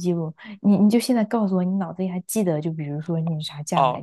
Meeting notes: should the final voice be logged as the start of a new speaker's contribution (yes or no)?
yes